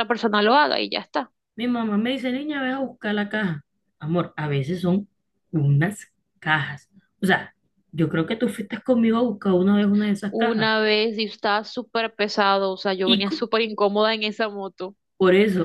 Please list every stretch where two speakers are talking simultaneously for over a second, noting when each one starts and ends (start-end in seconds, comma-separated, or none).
none